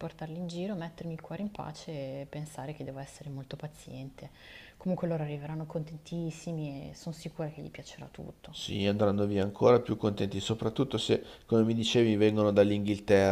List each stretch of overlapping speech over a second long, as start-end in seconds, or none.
none